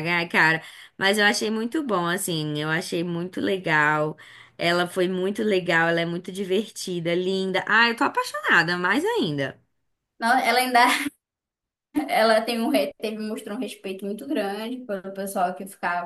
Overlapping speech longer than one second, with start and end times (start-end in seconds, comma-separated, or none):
none